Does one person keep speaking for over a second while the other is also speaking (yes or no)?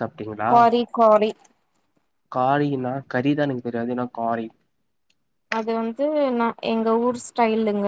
no